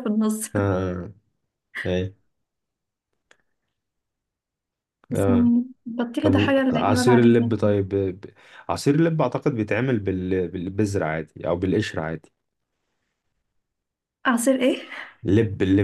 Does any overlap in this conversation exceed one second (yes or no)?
yes